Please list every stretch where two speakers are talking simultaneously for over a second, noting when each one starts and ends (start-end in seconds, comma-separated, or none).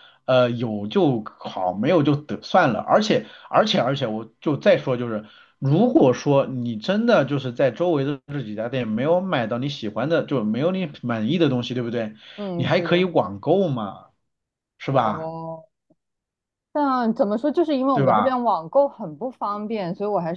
none